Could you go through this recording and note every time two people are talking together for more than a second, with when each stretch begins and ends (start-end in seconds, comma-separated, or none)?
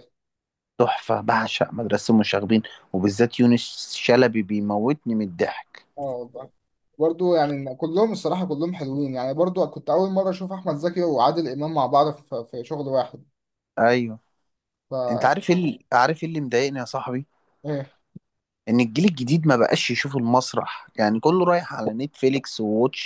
none